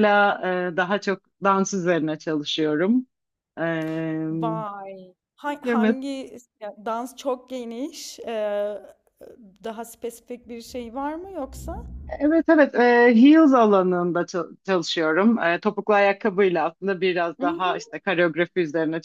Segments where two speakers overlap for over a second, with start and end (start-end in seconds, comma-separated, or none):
none